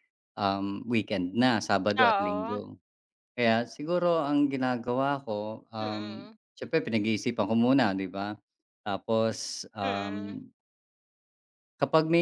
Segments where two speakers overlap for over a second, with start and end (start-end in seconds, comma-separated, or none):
none